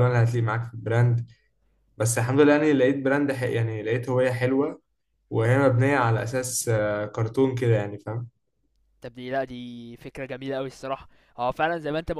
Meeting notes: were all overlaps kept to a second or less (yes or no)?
yes